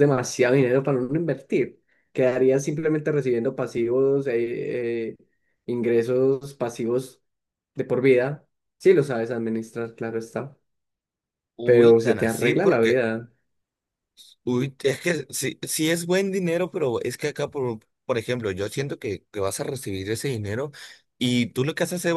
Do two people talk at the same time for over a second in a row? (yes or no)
yes